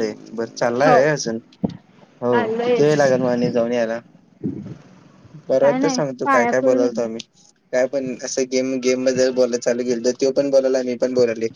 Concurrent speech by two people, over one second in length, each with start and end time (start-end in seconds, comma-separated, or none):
5.6-7.0